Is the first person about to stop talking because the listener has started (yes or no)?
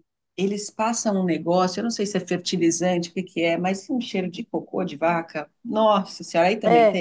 yes